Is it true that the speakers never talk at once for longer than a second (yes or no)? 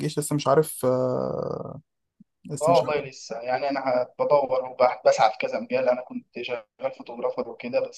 yes